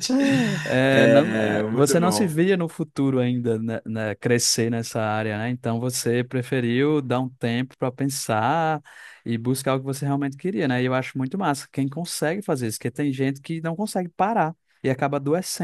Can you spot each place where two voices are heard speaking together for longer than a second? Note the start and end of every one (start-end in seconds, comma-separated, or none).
0.9-2.4